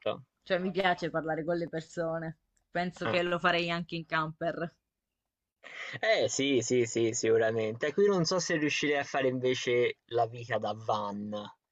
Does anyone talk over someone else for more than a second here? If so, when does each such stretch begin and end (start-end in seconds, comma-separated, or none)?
none